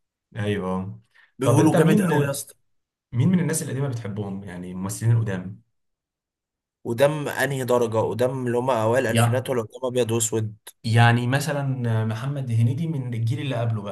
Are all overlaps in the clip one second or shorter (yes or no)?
yes